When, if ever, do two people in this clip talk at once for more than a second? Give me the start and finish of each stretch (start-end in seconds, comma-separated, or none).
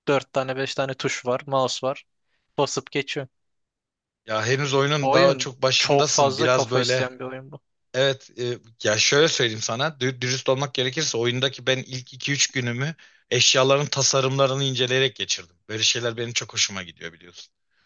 5.0-7.1